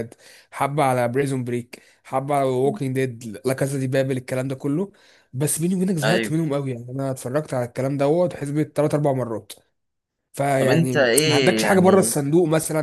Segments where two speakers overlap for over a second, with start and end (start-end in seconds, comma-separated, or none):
10.6-12.1